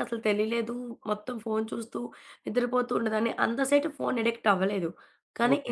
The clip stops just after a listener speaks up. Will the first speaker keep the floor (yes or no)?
no